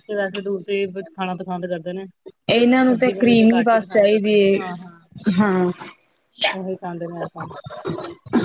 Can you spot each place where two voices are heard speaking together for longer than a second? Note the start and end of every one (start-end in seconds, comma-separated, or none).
2.9-5.0